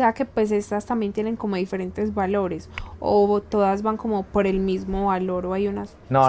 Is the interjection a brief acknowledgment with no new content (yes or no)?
no